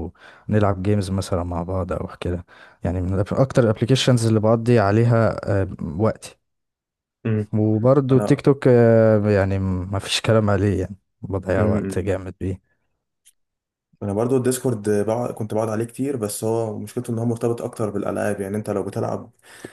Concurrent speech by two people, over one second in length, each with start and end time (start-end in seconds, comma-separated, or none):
none